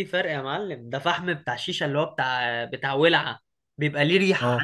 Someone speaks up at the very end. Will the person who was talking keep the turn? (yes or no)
yes